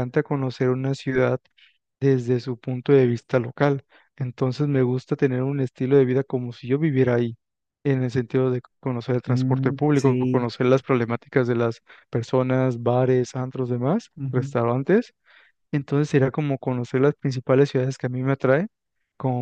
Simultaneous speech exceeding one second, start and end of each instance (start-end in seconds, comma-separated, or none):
9.3-10.5